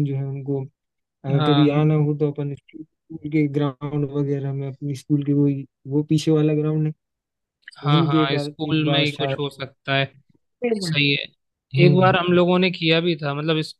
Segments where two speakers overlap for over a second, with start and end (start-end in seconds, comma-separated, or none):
7.8-9.4